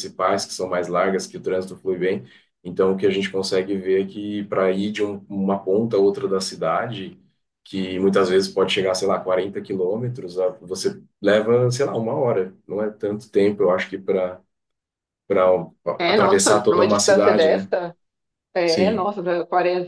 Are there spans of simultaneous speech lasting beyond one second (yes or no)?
yes